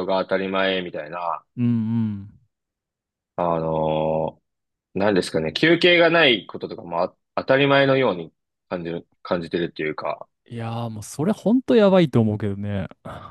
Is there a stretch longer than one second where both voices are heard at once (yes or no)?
no